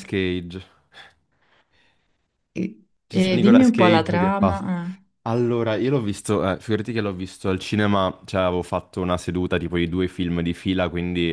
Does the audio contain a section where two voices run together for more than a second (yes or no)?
yes